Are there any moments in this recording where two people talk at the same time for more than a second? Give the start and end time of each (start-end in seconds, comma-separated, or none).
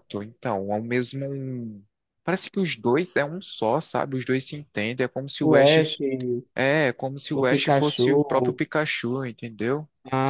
7.3-8.6